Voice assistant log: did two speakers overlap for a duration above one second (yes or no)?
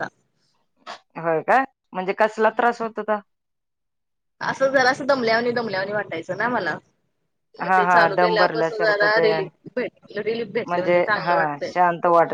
yes